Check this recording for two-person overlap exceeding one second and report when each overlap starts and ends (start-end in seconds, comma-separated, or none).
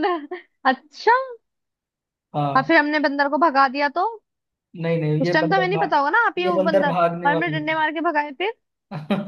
5.2-7.5